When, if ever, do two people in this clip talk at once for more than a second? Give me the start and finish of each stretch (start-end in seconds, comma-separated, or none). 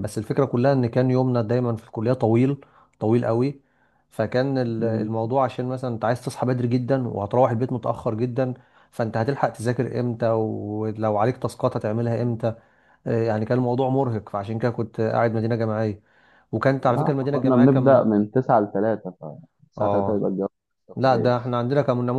16.9-18.1